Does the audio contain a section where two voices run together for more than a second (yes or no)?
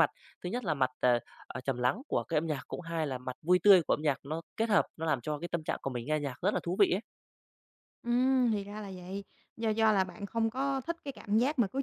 no